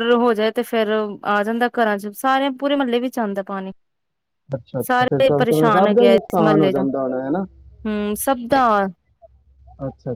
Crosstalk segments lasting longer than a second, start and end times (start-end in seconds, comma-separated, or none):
4.9-7.4